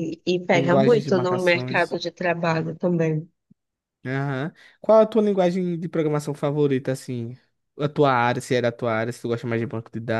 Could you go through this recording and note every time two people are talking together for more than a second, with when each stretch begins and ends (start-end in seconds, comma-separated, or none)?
0.5-2.0